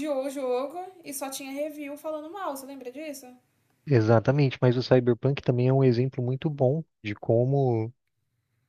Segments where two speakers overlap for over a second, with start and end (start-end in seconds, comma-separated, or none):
none